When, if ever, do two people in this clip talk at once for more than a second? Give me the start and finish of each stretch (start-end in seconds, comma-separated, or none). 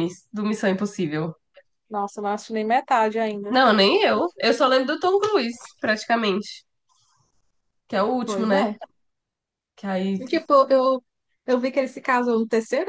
none